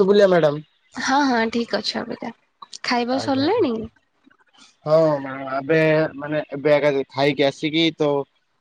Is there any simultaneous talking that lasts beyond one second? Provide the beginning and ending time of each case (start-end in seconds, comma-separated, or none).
none